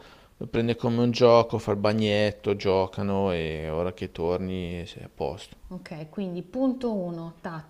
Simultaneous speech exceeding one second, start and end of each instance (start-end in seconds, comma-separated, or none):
none